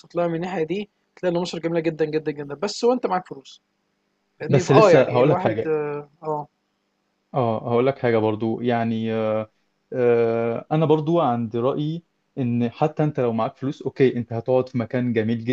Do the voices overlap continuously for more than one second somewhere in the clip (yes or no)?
yes